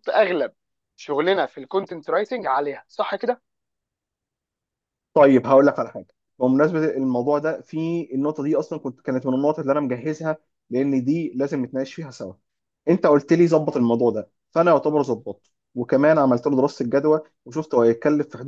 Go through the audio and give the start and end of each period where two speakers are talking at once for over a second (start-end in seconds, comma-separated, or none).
none